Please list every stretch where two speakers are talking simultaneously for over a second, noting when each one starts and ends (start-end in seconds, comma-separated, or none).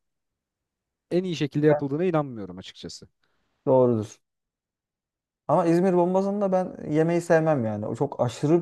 none